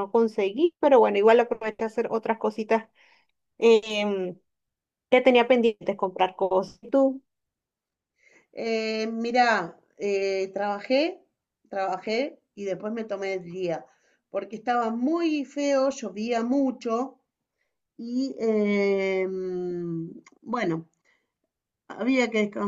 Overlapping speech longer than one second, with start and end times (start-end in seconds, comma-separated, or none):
none